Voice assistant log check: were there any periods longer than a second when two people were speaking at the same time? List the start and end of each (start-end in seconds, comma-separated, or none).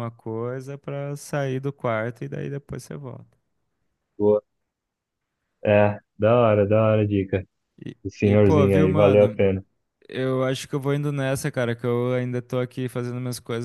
8.0-9.4